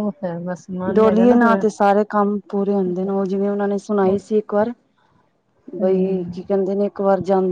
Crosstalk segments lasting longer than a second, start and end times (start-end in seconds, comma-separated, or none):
none